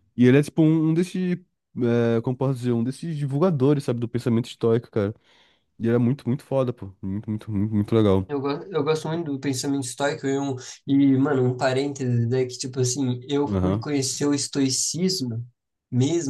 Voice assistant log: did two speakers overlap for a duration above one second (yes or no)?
no